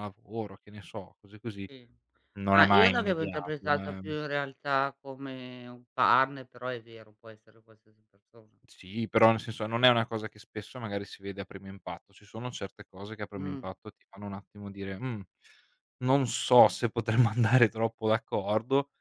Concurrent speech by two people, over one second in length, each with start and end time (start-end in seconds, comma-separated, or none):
2.6-4.1